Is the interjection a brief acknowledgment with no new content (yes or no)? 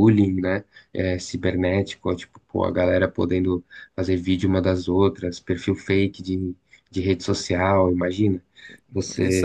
no